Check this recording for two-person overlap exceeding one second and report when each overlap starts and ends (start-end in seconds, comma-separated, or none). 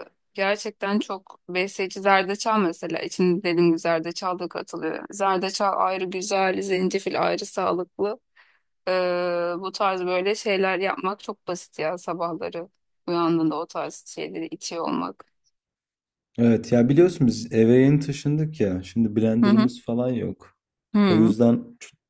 none